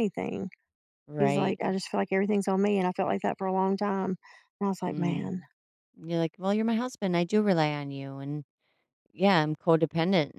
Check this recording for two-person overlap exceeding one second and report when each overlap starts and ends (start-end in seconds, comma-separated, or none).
none